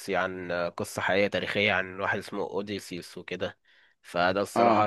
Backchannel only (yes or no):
yes